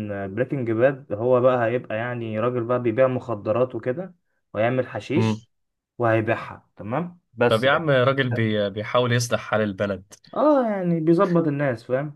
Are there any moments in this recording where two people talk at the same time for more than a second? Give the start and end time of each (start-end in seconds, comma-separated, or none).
none